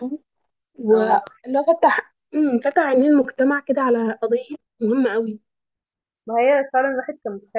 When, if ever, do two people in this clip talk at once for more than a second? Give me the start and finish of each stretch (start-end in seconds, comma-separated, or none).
none